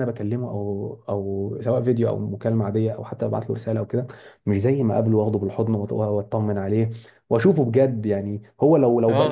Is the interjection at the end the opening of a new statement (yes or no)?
yes